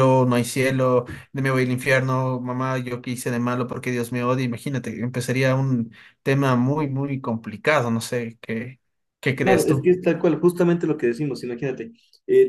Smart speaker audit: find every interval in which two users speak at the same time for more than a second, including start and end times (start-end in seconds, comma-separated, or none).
none